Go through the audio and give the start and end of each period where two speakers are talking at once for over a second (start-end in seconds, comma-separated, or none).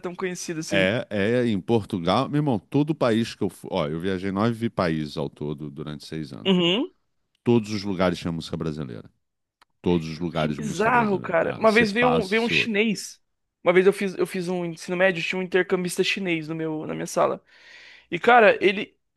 10.3-12.7